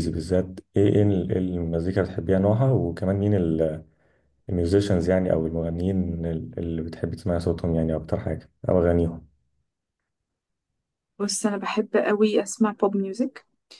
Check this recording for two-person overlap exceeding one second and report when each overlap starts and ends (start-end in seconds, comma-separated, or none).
none